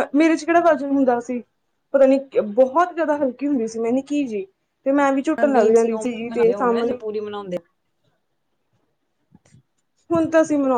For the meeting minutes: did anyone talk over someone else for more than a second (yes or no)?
yes